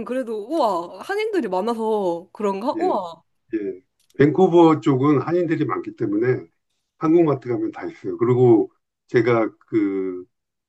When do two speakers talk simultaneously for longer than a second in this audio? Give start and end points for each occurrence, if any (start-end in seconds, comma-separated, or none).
none